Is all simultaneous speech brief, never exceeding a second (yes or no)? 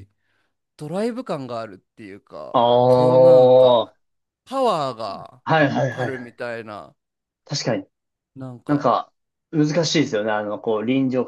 no